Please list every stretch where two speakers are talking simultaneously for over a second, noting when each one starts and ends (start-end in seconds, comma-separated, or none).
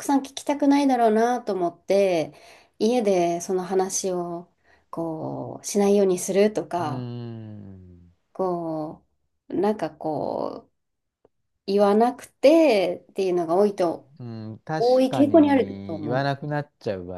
14.8-16.3